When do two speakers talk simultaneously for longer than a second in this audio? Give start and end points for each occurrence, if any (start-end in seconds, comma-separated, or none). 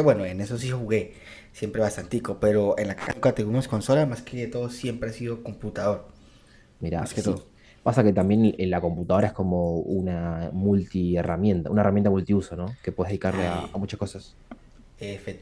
none